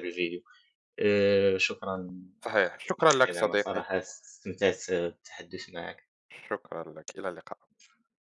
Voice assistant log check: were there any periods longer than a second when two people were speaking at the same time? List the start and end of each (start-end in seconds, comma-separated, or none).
2.4-3.8